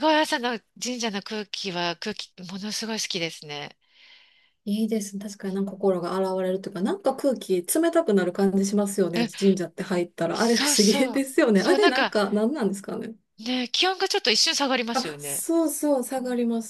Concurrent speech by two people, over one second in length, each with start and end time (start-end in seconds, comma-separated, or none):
10.3-12.1